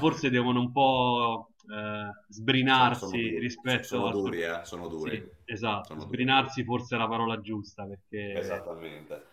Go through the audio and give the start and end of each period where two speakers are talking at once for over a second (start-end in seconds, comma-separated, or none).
2.7-4.2